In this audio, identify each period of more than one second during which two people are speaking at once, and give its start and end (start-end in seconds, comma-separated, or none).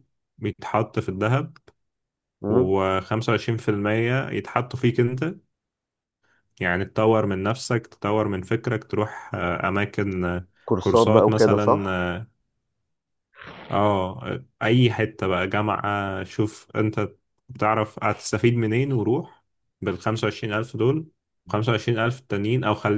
10.7-12.1